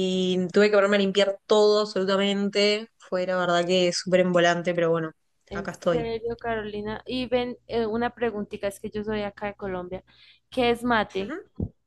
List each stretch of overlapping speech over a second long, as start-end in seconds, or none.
none